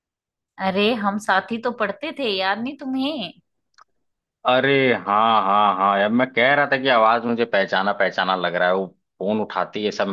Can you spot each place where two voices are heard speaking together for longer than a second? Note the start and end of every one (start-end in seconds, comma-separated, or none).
none